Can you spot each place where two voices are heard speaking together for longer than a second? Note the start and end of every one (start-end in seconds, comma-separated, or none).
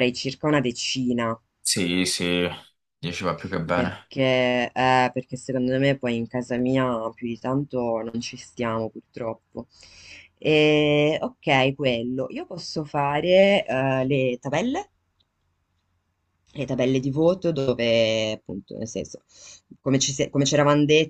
none